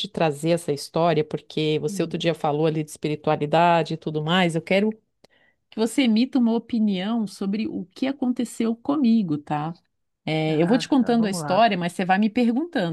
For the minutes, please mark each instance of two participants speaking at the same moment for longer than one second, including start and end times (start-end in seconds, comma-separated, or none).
10.4-11.7